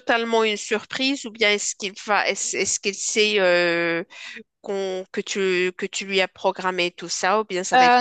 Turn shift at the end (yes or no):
yes